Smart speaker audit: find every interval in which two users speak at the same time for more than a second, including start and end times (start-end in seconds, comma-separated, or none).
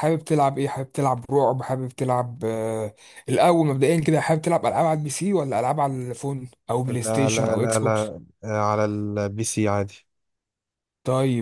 6.9-8.1